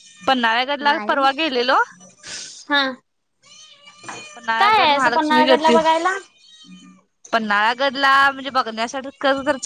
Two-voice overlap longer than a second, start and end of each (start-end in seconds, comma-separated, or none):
4.6-5.8